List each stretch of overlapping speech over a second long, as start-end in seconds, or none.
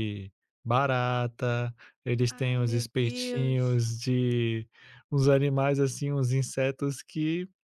2.3-3.8